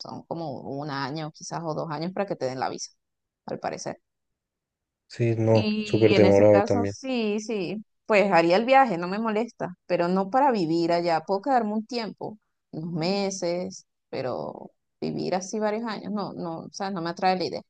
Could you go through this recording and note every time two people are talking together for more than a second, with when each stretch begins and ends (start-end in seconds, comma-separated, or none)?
5.5-6.9